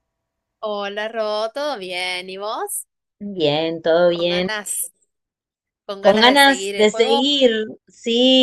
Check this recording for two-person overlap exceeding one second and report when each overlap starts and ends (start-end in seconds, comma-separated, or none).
6.0-7.3